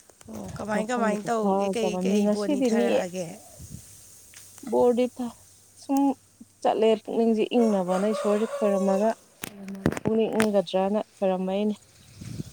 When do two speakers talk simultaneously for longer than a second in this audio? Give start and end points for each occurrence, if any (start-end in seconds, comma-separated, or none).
0.8-2.9